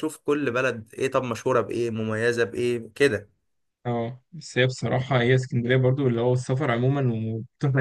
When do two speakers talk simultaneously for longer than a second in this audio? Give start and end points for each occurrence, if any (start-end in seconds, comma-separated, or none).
none